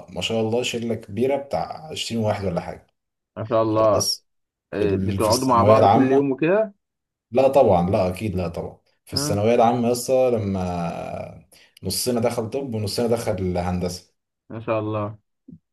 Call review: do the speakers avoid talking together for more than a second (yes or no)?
no